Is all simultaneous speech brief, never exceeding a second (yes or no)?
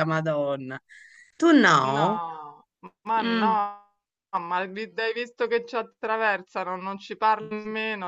yes